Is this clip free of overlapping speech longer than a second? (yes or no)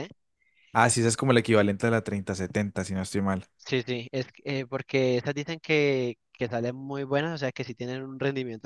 yes